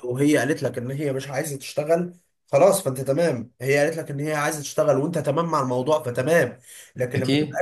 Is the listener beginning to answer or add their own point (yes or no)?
no